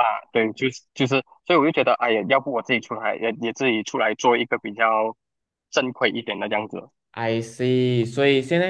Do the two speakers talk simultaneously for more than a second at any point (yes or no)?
no